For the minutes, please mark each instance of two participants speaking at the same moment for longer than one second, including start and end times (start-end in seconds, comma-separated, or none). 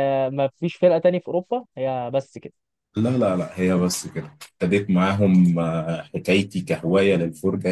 none